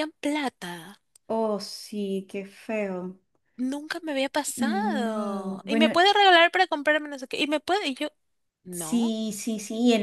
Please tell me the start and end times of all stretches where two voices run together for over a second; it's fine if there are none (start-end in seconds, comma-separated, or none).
4.6-5.9